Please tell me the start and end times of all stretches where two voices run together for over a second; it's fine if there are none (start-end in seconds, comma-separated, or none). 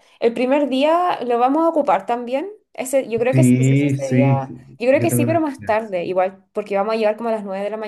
3.3-5.8